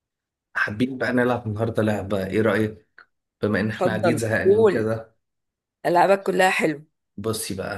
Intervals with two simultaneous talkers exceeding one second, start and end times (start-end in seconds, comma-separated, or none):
3.7-4.9